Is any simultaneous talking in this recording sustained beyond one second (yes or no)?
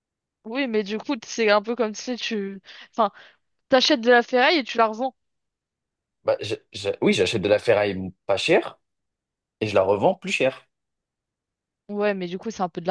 no